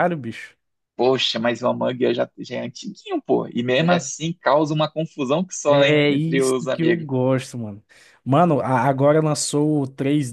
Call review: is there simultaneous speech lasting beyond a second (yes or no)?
yes